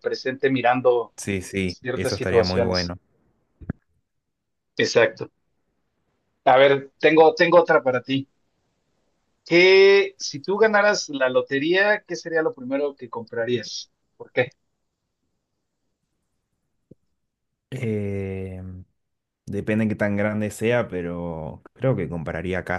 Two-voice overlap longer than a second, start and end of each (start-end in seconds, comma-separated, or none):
1.7-2.9